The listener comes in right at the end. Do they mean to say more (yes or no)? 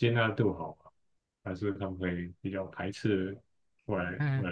yes